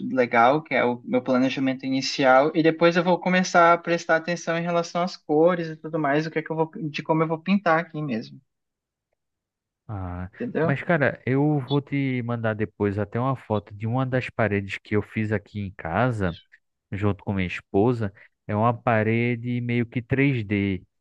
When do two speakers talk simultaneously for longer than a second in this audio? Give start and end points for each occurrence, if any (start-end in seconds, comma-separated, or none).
none